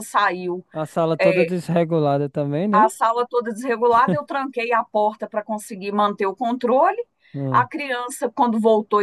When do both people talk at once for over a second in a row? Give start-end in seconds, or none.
none